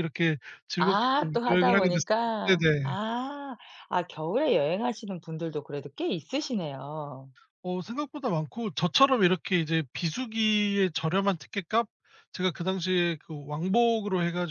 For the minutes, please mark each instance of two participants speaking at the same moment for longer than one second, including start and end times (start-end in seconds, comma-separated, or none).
0.8-2.9